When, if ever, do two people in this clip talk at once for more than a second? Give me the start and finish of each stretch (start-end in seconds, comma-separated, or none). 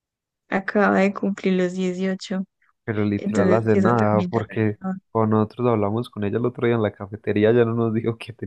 3.2-5.0